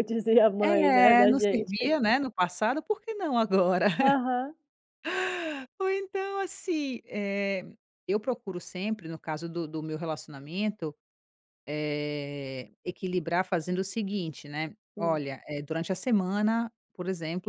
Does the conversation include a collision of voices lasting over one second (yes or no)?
yes